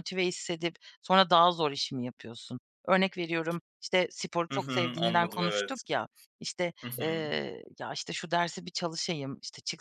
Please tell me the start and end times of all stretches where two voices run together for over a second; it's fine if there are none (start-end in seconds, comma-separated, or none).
4.5-5.8